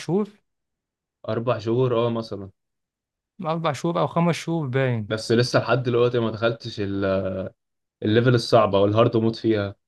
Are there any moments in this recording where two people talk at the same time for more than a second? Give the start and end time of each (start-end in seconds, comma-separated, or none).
none